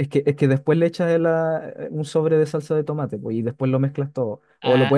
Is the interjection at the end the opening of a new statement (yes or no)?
yes